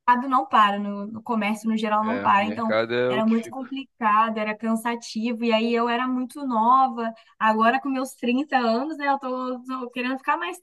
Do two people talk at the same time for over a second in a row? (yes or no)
yes